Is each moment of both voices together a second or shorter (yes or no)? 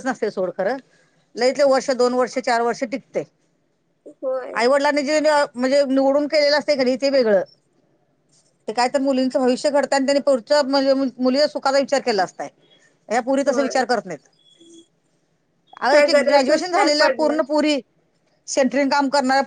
no